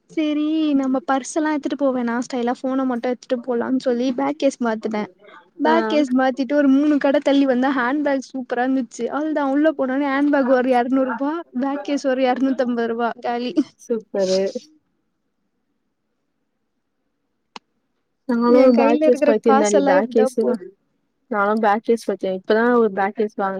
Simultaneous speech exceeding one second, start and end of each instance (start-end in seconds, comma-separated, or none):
18.6-20.5